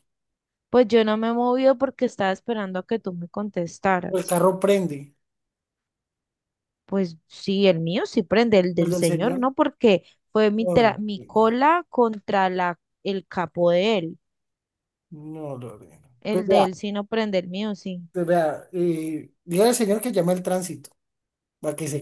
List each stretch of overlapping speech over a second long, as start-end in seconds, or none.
none